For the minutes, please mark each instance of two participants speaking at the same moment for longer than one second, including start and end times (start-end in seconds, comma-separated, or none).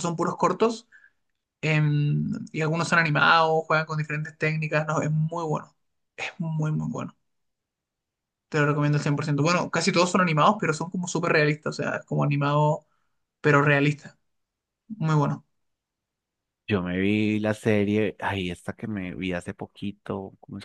none